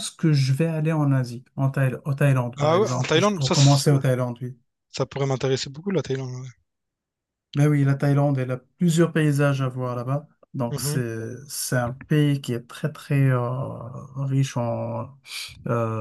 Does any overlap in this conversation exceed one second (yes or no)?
yes